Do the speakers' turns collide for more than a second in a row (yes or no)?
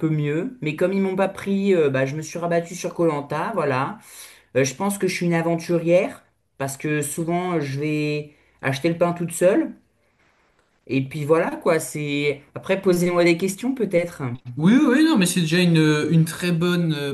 no